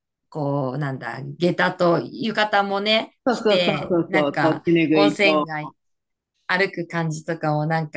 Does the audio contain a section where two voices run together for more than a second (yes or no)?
yes